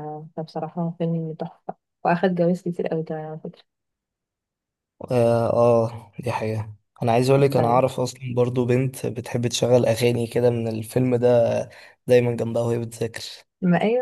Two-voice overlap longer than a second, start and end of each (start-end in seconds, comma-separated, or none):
none